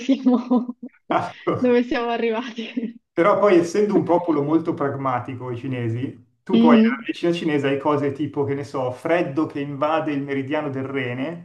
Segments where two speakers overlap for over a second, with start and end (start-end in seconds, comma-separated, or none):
none